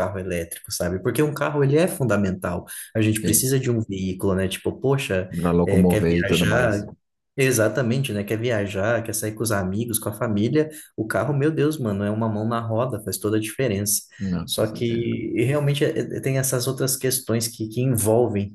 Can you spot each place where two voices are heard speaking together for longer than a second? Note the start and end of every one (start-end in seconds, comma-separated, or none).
5.3-6.8